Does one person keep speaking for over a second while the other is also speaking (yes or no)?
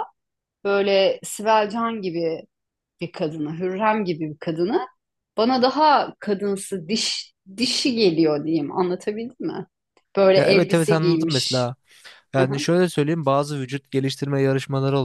yes